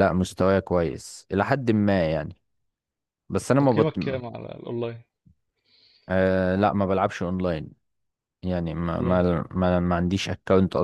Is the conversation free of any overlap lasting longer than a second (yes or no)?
yes